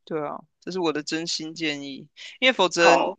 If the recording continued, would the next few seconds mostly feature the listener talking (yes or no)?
no